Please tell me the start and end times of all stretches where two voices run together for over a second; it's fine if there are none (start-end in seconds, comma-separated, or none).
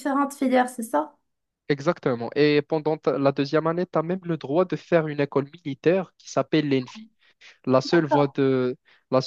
none